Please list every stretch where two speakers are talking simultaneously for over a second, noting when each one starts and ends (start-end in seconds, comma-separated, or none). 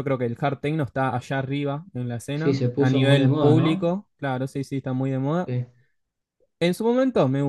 2.3-3.9